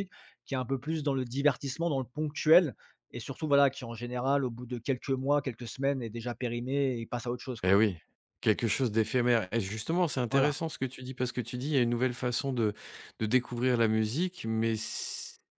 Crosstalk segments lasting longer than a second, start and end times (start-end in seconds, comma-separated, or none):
none